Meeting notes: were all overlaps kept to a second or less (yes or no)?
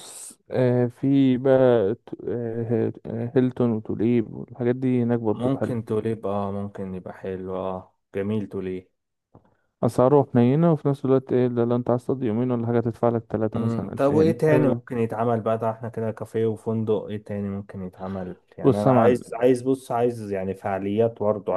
no